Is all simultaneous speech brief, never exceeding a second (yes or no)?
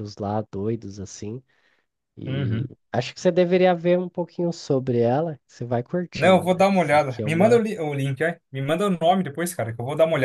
no